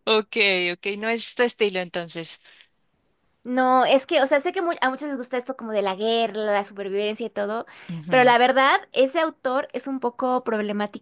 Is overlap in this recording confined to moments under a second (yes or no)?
yes